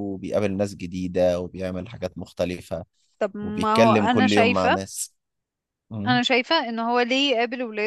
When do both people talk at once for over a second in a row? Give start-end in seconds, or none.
3.4-4.8